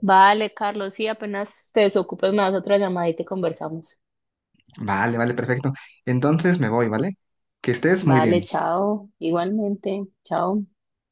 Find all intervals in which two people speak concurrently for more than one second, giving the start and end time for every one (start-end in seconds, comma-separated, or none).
none